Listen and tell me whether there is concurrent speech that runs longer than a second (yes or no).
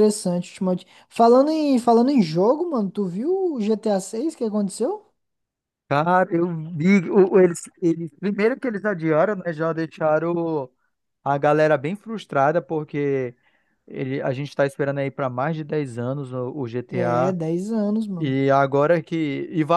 no